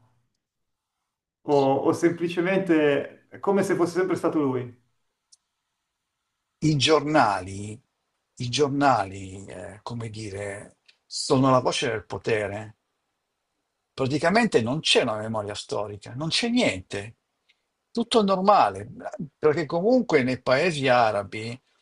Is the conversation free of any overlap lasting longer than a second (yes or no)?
yes